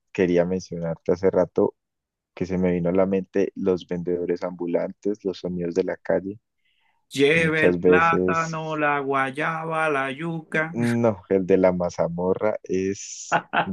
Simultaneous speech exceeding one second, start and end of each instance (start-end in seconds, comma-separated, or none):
7.3-8.8